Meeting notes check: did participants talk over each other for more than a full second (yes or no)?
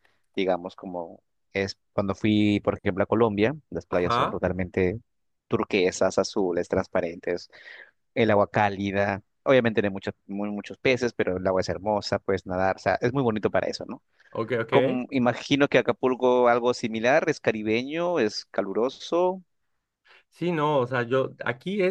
no